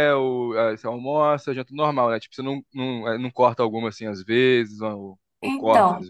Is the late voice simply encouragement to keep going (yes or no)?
no